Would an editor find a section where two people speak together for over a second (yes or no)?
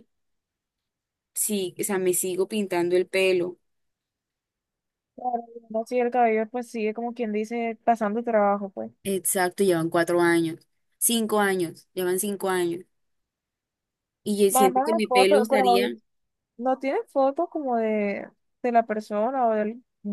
yes